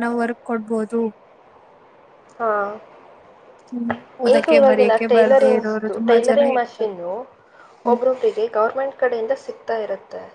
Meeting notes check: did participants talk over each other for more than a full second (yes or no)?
yes